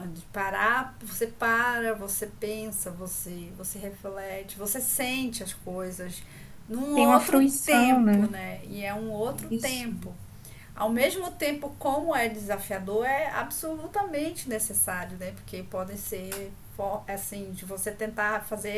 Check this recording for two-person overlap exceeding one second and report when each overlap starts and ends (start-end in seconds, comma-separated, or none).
6.9-8.4